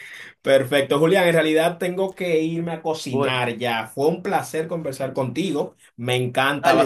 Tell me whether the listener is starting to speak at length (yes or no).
yes